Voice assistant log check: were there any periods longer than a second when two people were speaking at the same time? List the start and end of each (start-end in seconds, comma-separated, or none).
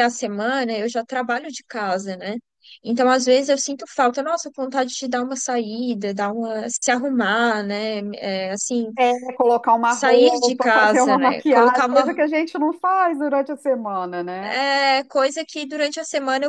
9.9-12.1